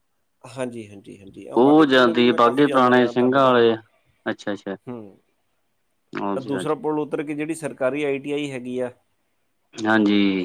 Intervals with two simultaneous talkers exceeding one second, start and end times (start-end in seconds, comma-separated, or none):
1.6-3.7